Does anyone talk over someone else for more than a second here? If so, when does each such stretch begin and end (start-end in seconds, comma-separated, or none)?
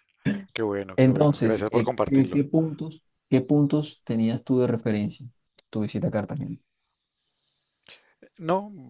1.0-2.4